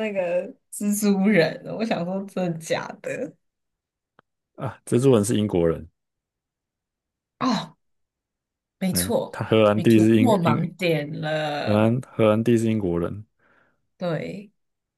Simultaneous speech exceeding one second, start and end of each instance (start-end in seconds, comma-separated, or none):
8.9-10.7